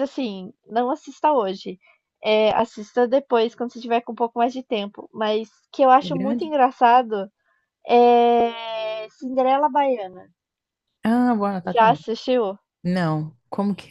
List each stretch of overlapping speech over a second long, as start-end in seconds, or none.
none